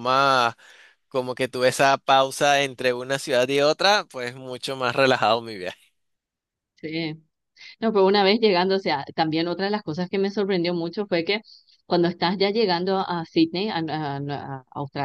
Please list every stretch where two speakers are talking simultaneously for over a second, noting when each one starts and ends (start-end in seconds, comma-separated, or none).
none